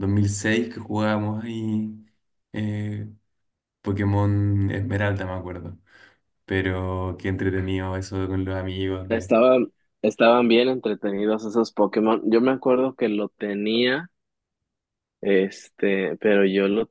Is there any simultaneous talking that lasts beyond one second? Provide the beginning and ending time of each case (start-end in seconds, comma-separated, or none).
none